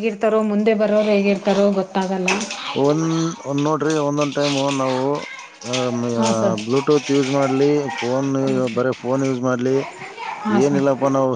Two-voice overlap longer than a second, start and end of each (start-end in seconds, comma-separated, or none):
none